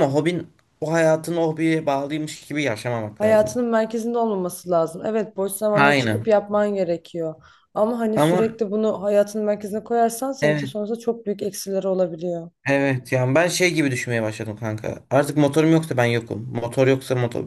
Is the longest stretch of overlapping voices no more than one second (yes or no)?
yes